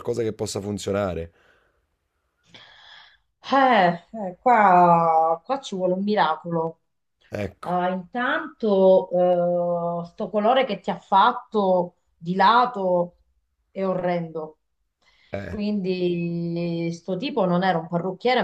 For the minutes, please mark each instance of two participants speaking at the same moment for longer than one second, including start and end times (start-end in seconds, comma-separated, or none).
none